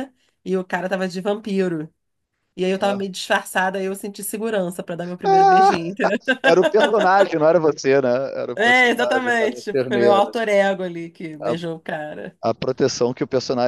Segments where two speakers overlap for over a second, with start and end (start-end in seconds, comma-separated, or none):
8.6-10.3